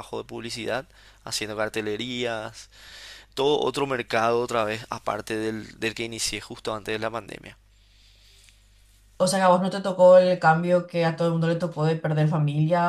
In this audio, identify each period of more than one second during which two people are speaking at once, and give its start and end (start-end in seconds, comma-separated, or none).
none